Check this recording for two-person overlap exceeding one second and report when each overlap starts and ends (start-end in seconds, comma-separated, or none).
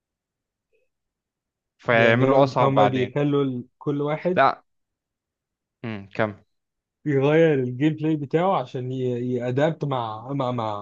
1.9-3.1